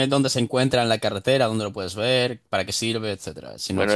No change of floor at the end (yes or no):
no